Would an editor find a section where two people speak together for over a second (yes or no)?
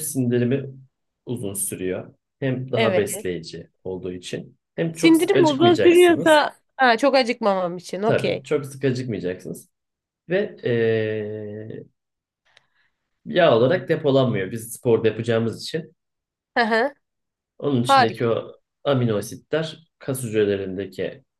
yes